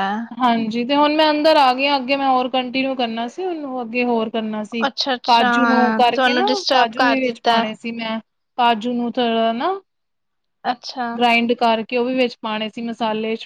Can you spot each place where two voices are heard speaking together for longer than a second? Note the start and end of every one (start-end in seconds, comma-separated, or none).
5.3-7.5